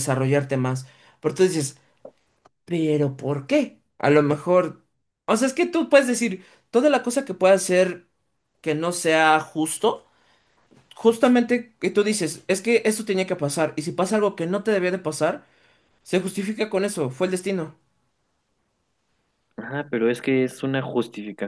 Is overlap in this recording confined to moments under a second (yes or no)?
yes